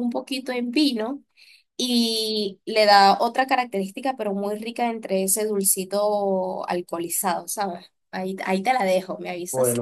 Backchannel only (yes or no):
no